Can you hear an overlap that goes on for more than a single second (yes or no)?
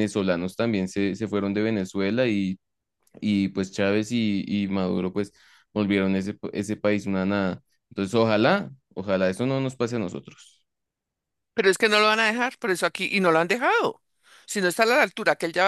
no